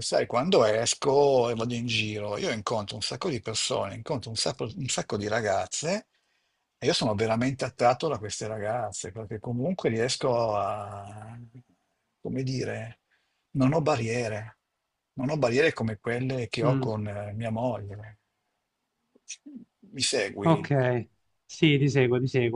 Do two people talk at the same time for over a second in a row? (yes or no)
no